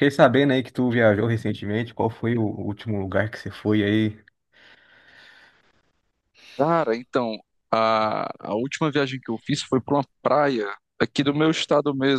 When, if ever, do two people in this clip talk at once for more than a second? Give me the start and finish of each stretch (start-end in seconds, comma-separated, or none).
none